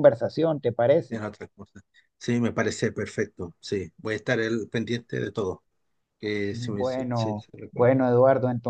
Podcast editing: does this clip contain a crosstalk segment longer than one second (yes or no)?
yes